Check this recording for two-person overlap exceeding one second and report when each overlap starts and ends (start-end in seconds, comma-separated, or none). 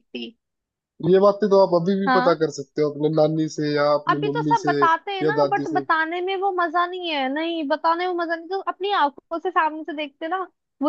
4.1-5.8